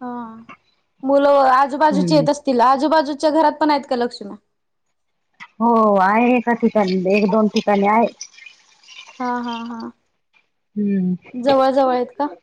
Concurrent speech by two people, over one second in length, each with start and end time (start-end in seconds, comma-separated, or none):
none